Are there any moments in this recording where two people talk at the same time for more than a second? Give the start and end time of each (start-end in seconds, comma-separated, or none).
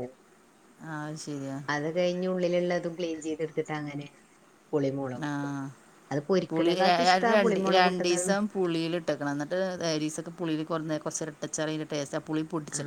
6.5-8.3